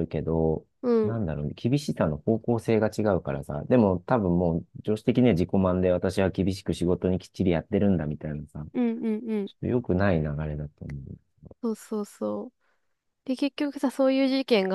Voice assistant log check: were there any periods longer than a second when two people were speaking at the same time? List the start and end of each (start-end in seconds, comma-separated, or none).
none